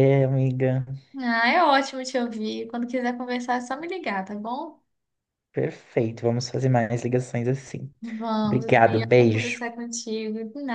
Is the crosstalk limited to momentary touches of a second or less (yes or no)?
no